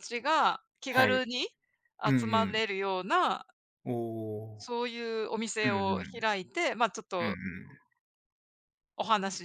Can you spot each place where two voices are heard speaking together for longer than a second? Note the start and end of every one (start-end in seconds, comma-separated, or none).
none